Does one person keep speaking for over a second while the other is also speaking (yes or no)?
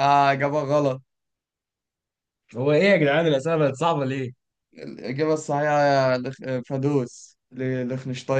no